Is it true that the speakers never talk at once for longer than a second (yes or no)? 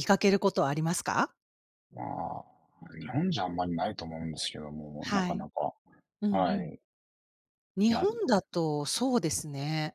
yes